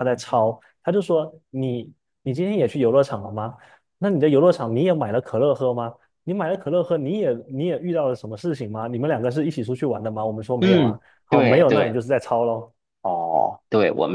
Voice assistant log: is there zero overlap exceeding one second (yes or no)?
no